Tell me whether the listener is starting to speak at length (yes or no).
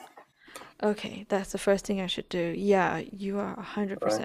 yes